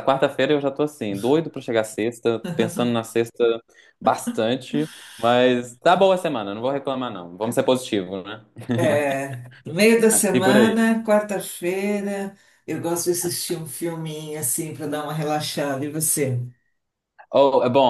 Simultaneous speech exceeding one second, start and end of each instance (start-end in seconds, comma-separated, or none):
none